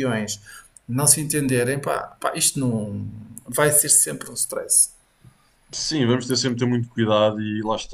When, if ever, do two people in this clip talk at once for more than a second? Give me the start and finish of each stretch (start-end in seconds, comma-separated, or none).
none